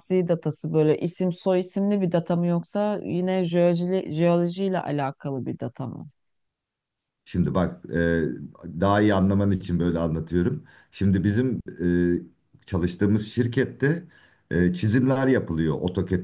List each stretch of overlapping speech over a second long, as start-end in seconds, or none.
none